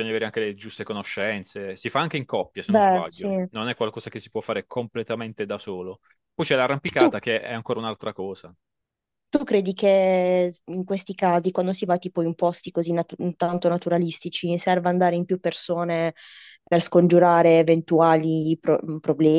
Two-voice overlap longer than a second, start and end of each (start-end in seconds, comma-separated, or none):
none